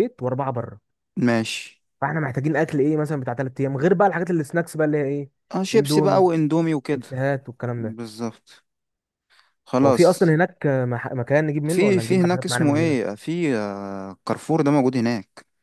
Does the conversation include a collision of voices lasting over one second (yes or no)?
yes